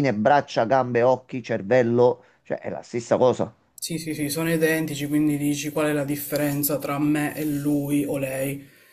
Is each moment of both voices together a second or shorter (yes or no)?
yes